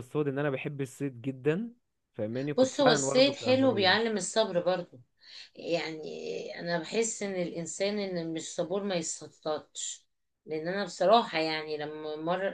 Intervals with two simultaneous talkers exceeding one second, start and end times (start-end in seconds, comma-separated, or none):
2.6-4.1